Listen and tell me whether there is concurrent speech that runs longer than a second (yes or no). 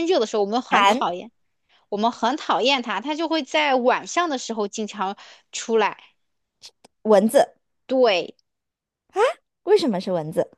no